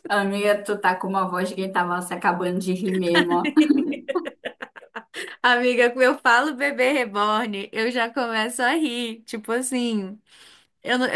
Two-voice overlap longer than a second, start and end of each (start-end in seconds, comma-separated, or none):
none